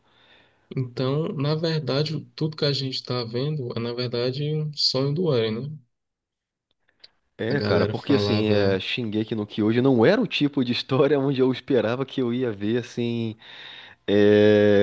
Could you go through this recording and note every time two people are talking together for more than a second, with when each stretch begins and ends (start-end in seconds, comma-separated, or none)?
7.5-8.8